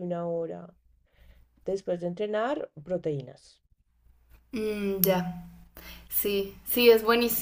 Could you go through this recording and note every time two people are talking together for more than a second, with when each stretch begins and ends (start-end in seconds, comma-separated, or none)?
none